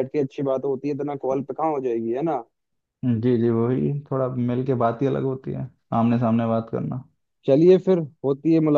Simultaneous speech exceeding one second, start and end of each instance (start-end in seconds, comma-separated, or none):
none